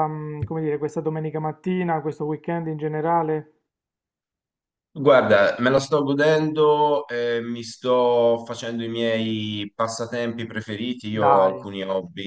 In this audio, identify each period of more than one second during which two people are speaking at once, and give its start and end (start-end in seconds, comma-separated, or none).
none